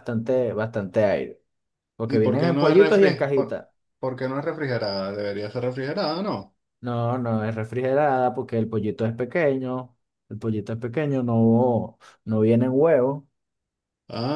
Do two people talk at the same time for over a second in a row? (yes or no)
yes